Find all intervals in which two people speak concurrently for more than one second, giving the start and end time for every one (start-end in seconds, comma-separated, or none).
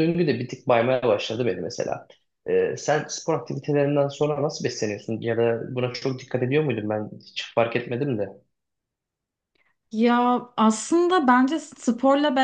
none